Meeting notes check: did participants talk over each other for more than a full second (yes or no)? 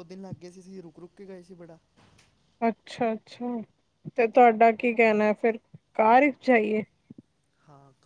no